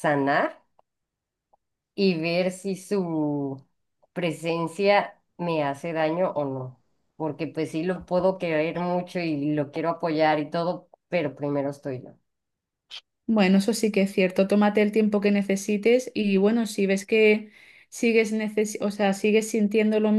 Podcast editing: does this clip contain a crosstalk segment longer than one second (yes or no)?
no